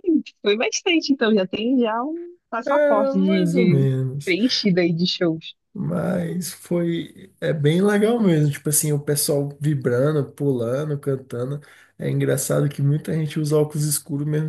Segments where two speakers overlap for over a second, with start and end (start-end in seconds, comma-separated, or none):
2.6-4.3